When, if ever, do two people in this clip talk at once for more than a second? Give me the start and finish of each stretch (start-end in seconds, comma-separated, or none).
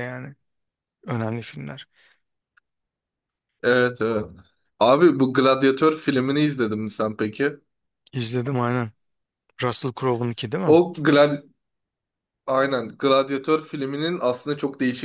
none